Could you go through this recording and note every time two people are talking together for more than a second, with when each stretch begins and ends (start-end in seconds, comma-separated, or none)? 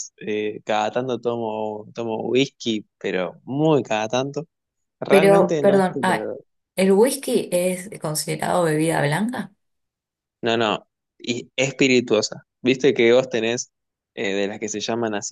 5.1-6.3